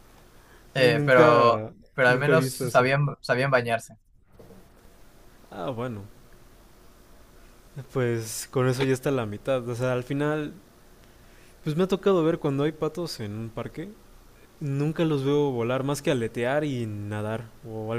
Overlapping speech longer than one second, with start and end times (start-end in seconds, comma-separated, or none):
0.7-2.9